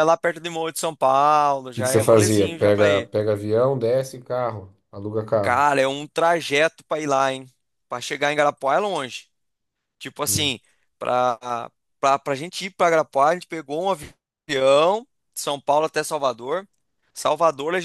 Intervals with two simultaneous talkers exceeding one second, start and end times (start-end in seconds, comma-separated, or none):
1.7-3.1